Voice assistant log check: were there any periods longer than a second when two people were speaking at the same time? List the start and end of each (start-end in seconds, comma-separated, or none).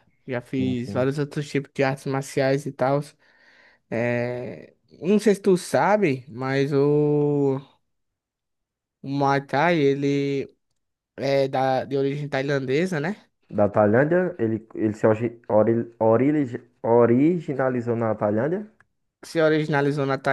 none